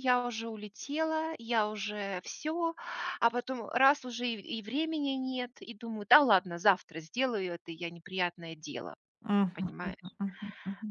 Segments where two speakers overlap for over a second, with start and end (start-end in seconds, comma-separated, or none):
none